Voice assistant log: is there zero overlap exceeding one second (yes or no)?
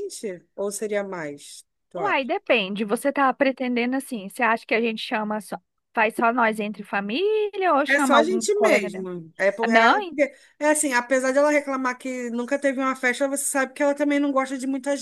no